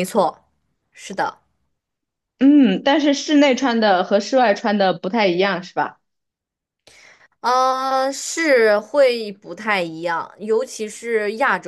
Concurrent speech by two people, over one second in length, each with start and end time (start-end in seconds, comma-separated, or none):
none